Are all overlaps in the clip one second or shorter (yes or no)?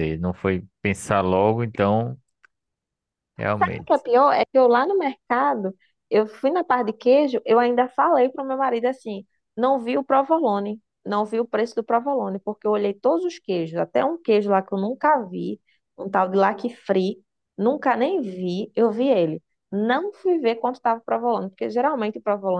yes